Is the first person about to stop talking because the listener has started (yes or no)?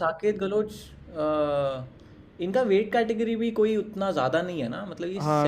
yes